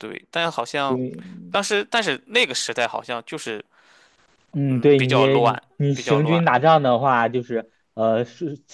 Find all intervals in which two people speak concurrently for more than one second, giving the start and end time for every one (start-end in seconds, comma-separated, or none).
4.7-6.4